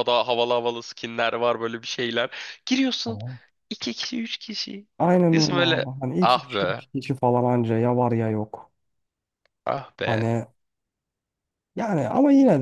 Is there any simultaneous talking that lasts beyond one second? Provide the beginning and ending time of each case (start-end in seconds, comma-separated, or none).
5.3-6.8